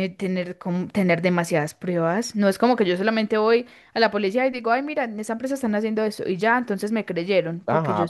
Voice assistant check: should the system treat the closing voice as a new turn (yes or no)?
yes